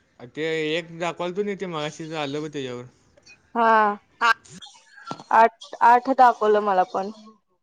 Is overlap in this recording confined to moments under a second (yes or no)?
yes